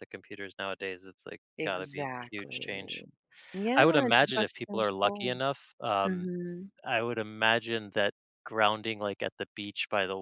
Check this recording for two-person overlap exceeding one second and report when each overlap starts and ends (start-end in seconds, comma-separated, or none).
1.6-2.9, 3.8-5.3